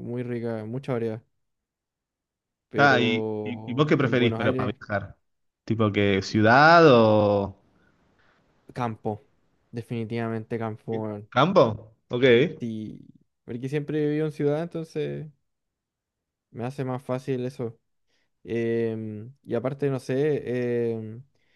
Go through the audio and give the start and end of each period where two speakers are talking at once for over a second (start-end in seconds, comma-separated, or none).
2.8-4.8